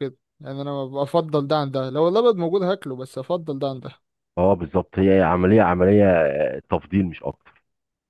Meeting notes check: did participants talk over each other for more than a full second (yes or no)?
no